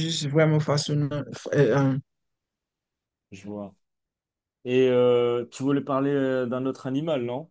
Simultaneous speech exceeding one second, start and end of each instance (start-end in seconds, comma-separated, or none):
none